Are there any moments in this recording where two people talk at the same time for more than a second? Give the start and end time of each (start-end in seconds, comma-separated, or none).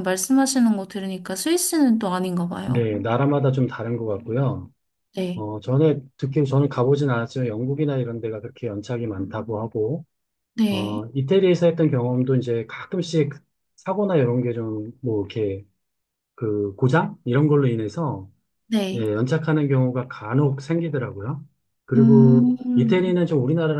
21.9-23.2